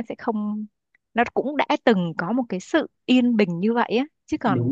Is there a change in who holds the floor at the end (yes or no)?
no